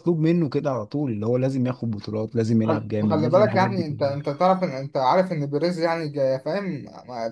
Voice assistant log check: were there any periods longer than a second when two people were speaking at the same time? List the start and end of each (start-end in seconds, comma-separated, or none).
2.6-4.2